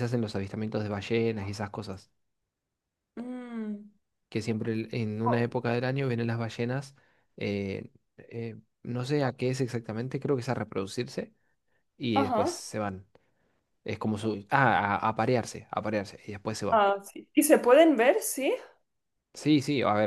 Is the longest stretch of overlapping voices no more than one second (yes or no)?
yes